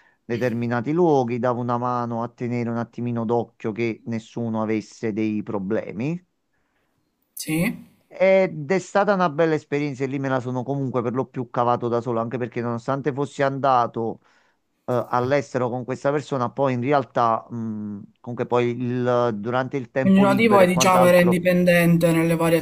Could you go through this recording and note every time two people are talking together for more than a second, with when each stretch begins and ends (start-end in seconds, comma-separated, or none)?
20.0-21.4